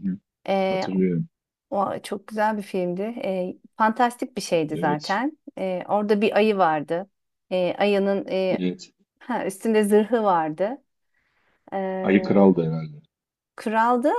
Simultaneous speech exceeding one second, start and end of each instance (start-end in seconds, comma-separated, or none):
none